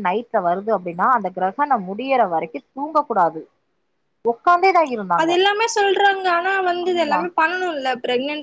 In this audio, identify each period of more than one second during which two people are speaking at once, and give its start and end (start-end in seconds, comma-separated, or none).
none